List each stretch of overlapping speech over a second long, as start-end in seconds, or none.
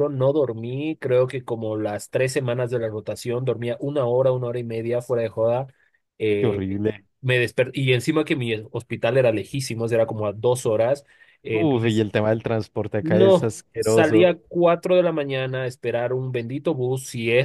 13.0-14.3